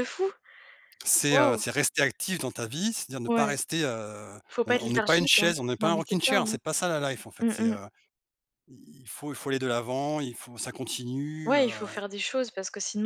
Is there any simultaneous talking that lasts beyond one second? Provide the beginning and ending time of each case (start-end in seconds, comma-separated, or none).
4.5-6.6